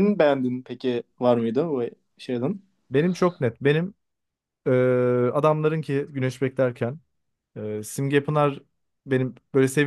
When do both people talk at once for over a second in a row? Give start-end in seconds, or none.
none